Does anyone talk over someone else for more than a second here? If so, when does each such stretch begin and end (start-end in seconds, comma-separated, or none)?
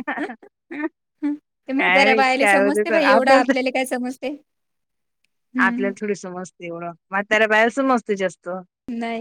1.8-3.3